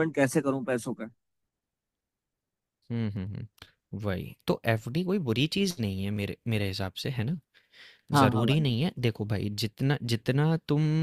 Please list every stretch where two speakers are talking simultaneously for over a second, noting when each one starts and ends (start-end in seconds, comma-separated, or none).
none